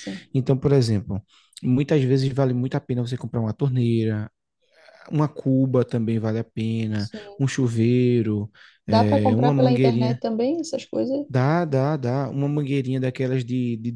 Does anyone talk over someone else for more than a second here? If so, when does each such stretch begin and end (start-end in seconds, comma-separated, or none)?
8.9-10.2